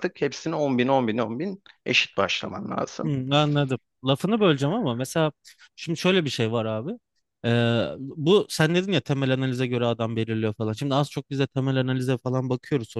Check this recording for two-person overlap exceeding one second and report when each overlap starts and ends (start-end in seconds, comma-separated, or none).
none